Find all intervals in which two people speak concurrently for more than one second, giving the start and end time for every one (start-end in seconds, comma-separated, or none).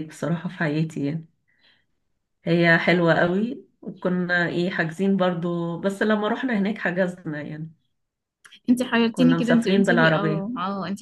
9.1-10.5